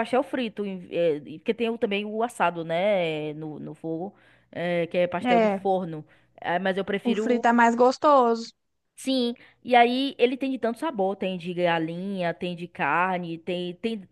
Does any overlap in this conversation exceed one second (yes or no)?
no